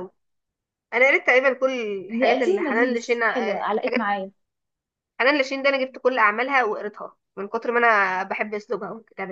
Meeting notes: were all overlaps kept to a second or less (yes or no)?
no